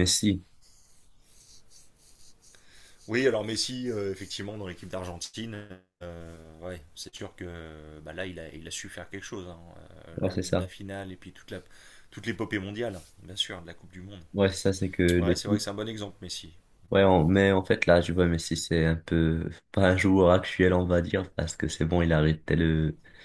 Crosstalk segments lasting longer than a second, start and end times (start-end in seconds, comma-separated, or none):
none